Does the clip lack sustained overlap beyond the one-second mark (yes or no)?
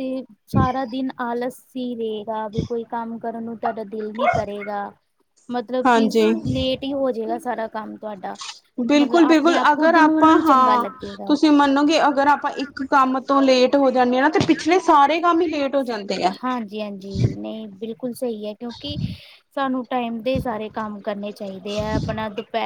no